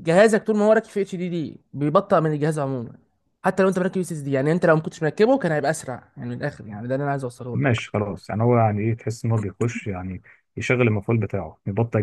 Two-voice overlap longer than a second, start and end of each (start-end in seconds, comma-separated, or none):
none